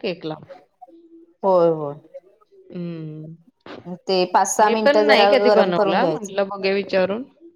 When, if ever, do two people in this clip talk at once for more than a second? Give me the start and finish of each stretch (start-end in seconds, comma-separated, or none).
4.6-6.7